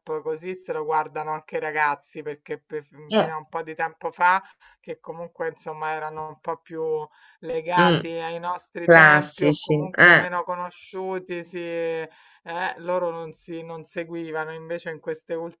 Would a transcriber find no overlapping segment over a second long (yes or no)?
no